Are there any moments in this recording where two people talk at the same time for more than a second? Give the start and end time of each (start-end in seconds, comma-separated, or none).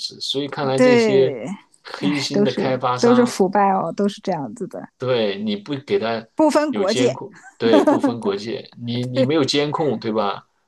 2.0-3.3